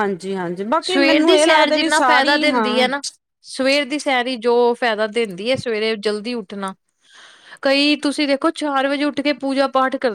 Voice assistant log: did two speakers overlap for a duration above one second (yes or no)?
yes